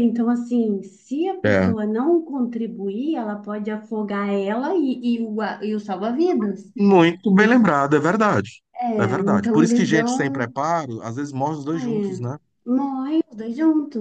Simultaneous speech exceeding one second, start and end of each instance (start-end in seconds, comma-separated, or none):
9.0-10.5